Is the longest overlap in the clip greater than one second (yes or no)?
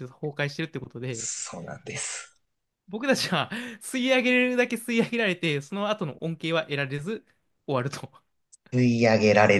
no